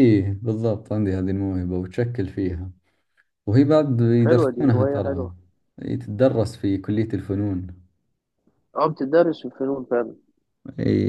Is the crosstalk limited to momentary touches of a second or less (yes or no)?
no